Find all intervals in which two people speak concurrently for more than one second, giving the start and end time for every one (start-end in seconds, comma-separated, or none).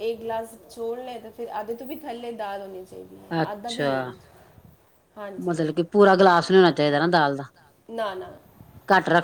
none